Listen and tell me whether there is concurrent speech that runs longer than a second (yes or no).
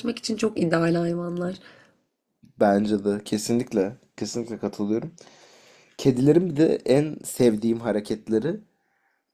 no